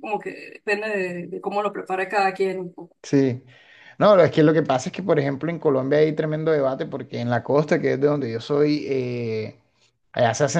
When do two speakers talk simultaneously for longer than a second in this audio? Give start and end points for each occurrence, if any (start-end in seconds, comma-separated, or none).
none